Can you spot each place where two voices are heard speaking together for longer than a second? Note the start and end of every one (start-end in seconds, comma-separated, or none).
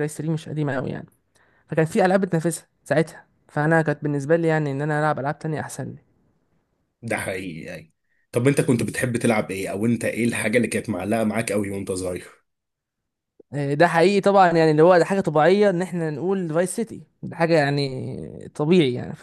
none